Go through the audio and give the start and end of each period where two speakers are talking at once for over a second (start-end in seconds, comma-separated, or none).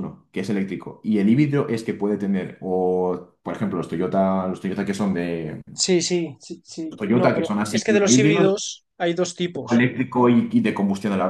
7.0-8.6